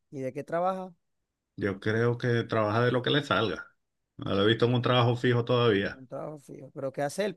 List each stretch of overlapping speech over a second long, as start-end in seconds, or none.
none